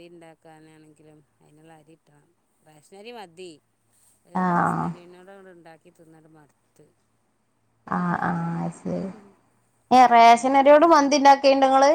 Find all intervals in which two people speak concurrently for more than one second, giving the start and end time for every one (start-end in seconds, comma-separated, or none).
none